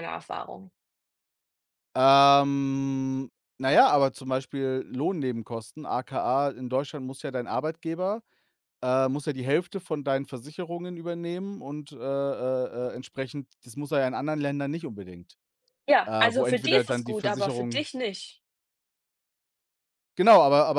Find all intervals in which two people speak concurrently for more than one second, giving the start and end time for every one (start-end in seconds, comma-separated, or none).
16.1-17.9